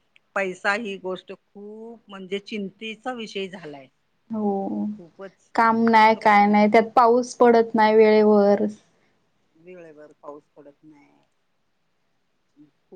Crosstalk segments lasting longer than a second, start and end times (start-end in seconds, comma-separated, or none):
none